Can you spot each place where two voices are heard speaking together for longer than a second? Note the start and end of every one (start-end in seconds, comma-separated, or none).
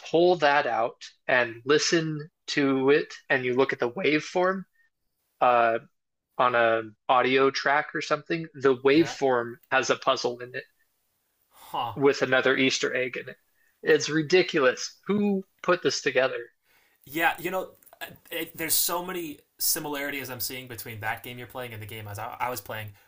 none